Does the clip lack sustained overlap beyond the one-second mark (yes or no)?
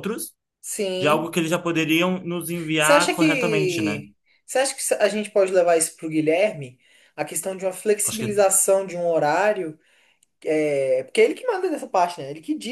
no